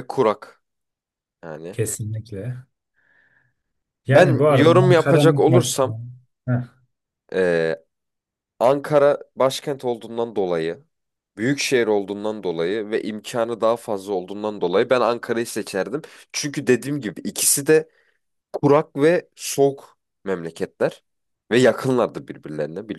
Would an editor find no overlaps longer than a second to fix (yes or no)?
no